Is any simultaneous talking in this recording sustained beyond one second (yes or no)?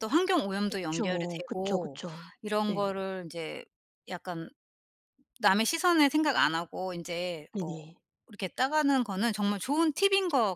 yes